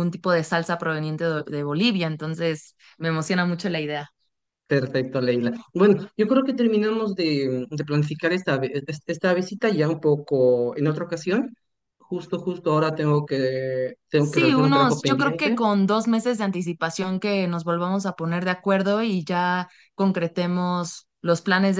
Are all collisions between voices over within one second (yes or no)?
no